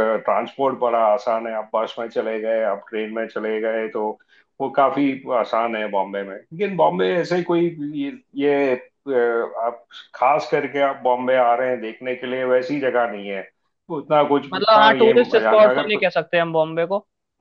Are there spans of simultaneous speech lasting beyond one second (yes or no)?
yes